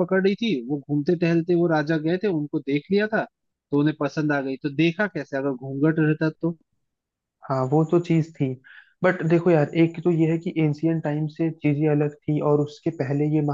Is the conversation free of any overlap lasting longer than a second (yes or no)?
yes